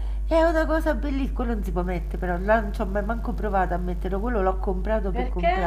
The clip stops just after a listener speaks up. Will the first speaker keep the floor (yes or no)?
yes